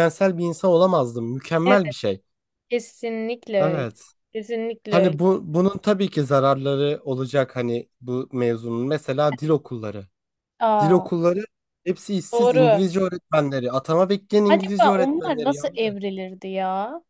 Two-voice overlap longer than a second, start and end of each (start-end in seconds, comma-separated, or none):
14.5-16.0